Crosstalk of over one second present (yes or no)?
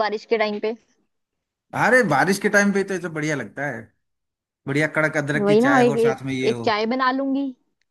yes